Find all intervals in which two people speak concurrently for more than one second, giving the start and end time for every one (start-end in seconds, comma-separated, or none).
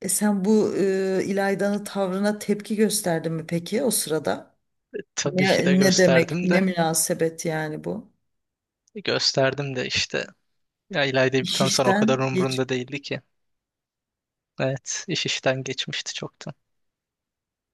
5.2-6.6, 11.4-12.7